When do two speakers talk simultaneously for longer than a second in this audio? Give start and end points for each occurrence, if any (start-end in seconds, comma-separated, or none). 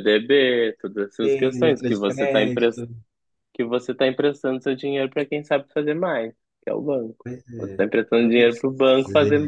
1.2-2.4